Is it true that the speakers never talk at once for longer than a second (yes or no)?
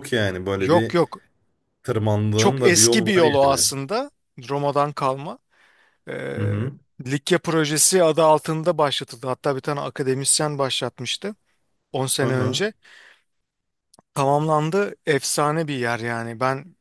no